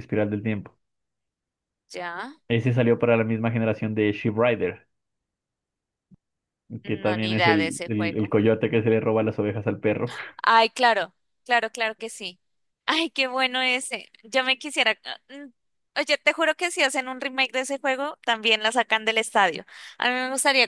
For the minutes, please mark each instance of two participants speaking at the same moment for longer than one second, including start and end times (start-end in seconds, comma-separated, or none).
6.8-8.3